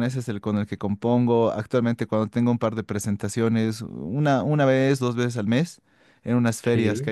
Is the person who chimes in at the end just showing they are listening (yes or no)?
yes